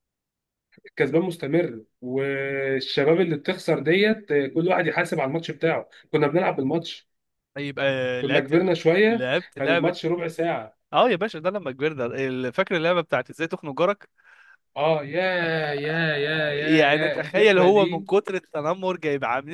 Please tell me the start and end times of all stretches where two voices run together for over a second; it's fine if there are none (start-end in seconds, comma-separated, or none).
8.2-9.9, 16.5-18.1